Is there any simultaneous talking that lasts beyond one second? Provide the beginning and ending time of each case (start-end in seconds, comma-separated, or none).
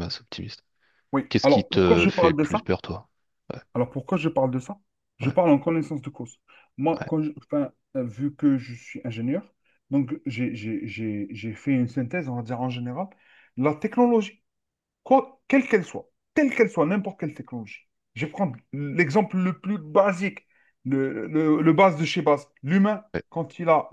1.3-2.6